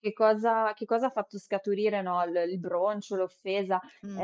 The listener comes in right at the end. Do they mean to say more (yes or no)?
no